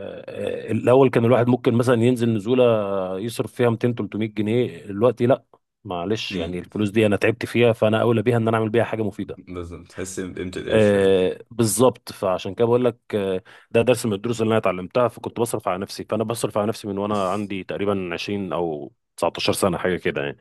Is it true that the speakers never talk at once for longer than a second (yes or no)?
yes